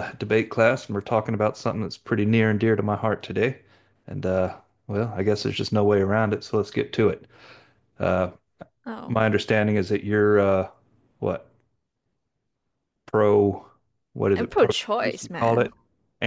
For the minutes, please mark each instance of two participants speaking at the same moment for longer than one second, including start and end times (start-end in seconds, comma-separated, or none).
14.3-15.7